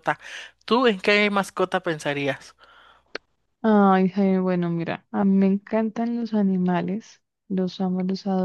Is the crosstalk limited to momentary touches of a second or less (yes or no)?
yes